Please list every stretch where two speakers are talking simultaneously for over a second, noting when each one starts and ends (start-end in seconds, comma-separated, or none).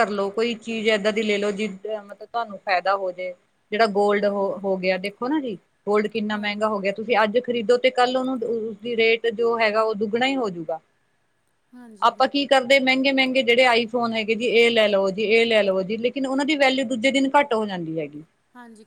none